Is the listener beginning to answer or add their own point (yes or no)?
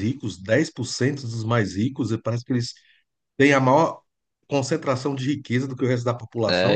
yes